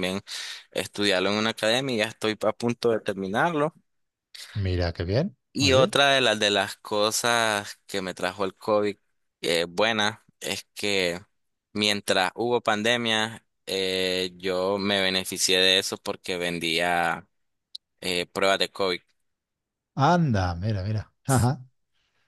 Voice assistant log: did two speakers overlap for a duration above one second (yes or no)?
no